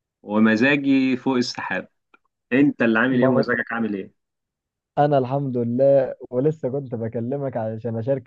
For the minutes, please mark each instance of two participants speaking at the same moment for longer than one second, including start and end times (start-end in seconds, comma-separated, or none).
none